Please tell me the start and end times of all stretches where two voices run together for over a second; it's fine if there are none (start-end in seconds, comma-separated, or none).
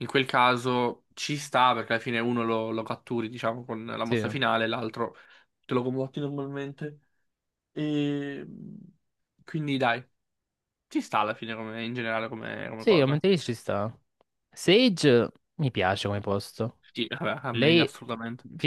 none